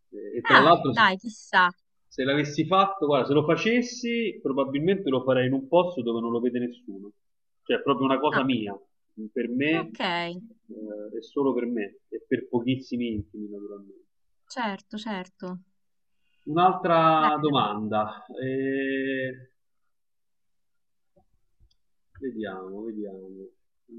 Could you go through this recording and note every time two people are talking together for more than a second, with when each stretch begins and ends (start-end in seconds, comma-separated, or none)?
none